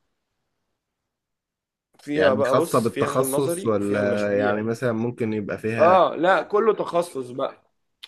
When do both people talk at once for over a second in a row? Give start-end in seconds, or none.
2.1-4.6